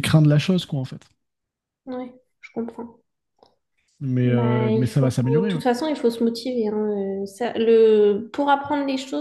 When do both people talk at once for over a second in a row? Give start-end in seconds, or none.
4.2-5.6